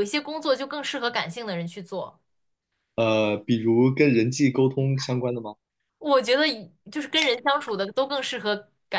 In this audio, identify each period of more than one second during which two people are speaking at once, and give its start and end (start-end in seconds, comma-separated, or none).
none